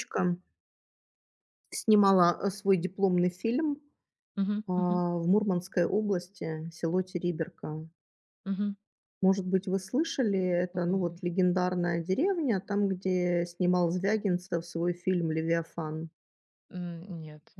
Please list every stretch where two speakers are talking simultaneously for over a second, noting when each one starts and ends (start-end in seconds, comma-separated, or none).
none